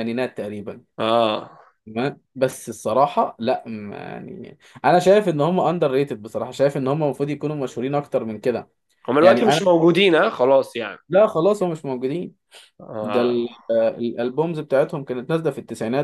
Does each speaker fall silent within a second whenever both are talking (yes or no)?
yes